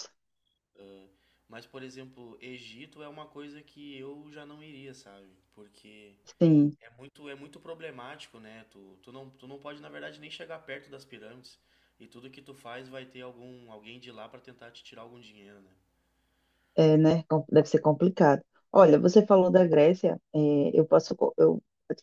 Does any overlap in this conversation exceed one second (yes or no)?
no